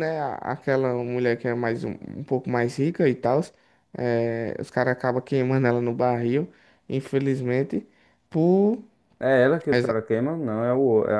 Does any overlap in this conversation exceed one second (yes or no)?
no